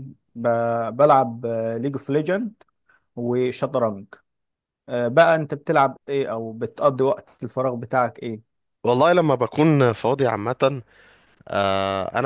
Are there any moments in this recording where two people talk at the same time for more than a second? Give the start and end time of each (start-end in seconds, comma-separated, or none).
none